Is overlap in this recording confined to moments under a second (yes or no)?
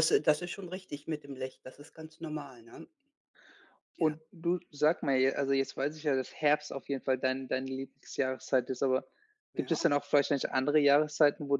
yes